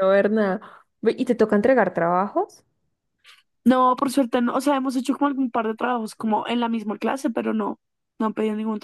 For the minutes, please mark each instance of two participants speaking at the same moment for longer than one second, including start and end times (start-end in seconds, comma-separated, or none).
none